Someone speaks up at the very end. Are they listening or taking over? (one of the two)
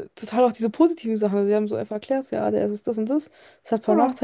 listening